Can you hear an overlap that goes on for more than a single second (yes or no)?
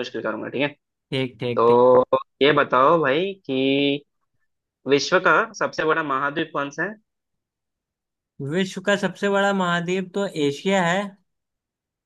no